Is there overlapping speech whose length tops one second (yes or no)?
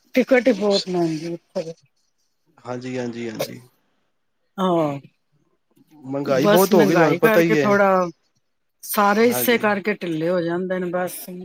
yes